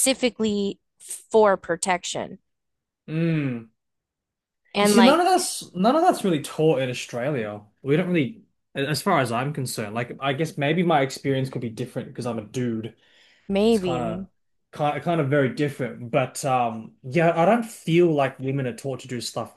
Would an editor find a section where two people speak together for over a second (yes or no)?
no